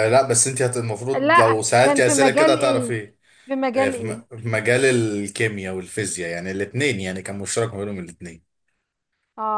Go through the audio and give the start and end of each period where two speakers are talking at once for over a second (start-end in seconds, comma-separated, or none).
1.1-2.9